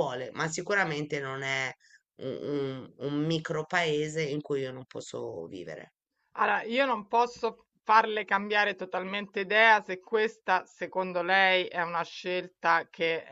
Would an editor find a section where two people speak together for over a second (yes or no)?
no